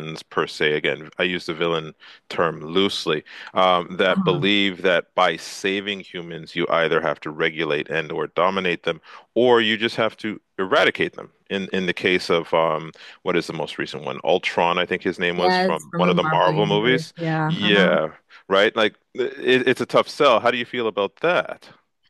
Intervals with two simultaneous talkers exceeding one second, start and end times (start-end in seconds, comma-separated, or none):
15.4-18.0